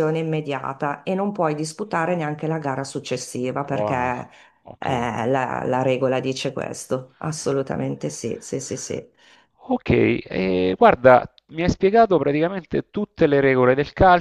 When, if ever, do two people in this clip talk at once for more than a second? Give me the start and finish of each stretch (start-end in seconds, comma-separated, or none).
none